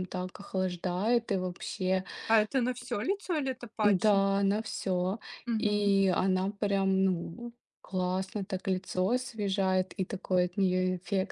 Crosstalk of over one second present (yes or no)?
no